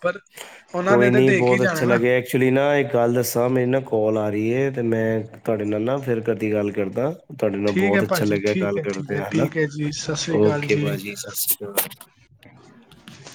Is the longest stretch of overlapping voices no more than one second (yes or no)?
no